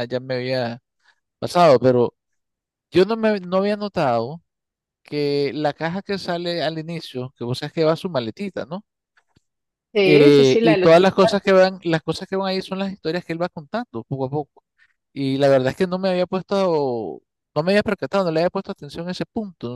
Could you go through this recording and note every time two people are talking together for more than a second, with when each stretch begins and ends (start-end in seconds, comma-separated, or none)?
10.0-11.7